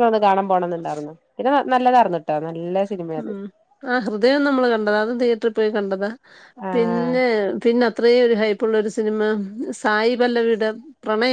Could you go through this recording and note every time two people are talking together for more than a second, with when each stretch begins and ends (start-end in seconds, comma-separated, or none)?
none